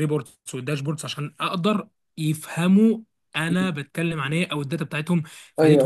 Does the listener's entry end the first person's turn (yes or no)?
yes